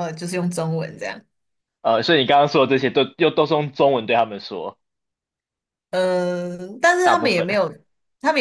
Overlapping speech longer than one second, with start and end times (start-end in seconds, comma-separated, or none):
none